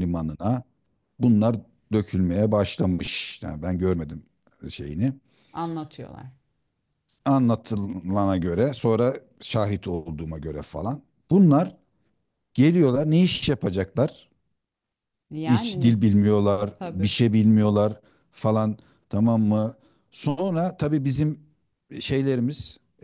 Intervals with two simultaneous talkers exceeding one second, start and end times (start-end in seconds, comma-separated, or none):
none